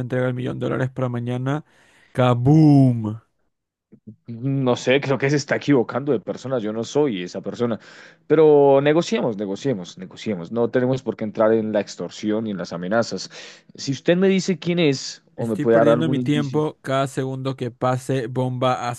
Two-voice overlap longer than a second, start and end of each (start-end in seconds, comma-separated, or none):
15.3-16.6